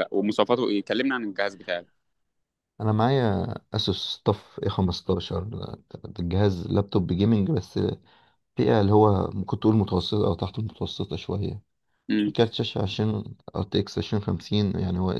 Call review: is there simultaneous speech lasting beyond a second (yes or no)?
no